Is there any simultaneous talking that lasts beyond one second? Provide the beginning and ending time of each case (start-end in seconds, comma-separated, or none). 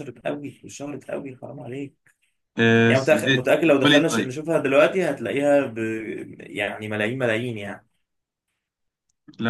2.9-4.4